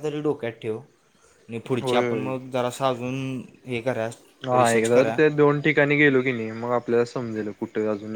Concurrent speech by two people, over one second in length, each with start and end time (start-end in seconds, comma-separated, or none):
none